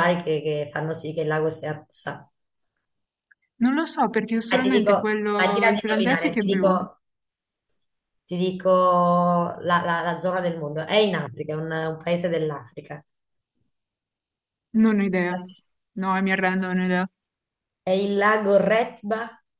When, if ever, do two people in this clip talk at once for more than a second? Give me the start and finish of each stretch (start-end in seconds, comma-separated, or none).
4.5-6.8